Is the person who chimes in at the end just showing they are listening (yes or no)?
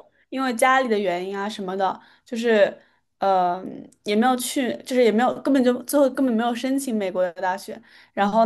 yes